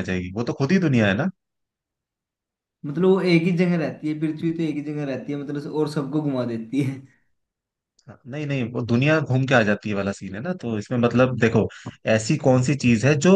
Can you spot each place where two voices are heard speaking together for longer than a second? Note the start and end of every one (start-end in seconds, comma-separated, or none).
none